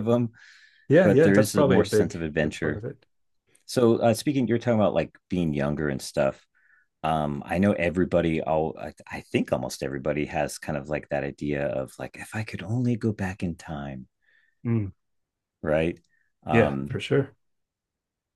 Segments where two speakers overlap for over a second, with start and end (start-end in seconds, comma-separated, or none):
1.0-2.8